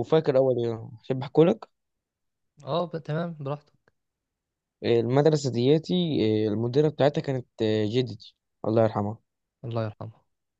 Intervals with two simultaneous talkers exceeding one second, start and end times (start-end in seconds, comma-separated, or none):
none